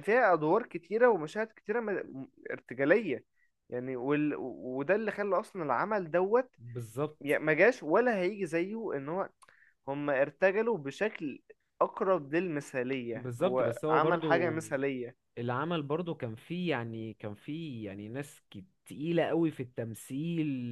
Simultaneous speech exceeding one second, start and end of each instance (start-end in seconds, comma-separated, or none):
13.1-14.5